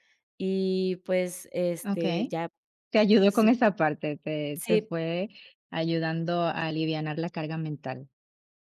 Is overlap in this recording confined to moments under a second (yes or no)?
yes